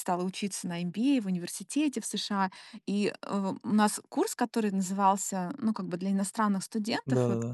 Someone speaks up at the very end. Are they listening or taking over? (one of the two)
listening